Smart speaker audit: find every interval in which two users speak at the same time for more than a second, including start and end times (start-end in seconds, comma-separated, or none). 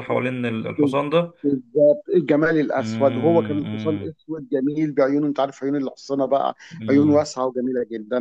2.8-4.1